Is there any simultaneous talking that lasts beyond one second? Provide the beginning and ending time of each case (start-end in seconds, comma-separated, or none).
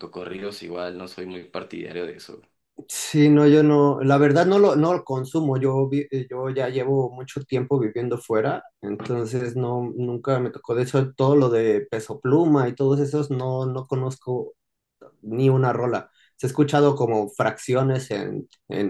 none